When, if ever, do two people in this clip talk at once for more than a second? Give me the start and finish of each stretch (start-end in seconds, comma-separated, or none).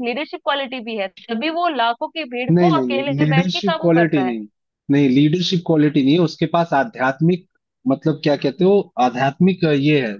2.5-4.3